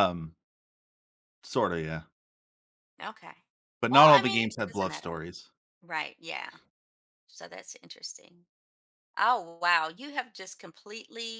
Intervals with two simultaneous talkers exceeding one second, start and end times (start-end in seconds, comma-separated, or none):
3.9-5.2